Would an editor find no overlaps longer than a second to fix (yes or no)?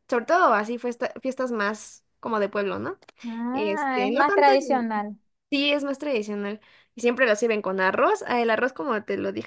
no